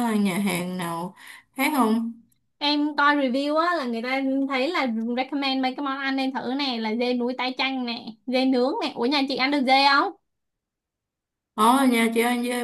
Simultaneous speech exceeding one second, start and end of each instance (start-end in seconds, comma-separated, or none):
none